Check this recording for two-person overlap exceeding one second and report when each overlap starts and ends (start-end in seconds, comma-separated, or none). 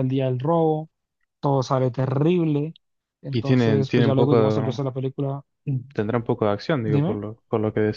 3.3-4.8